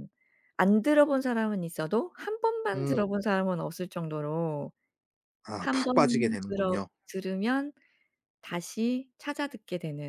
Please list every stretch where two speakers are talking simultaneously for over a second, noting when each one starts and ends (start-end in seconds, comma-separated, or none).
5.6-6.9